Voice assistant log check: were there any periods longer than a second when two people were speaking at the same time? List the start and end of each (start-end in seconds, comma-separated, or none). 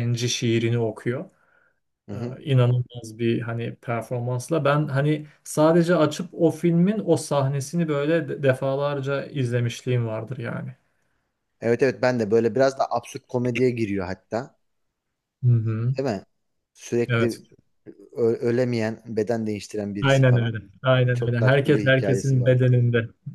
21.1-22.6